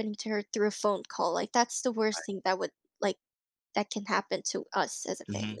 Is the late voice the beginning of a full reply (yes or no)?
yes